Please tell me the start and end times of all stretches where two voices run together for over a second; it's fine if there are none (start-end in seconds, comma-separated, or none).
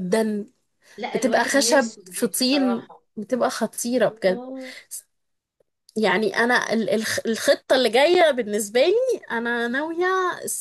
1.1-3.0